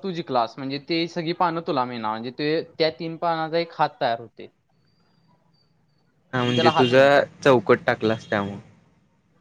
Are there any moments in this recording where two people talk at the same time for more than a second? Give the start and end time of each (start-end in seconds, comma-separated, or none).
none